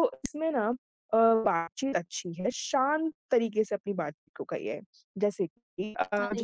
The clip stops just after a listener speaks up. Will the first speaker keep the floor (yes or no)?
yes